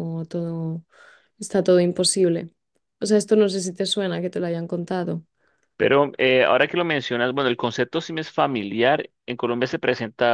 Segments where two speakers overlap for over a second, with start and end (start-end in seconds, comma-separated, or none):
none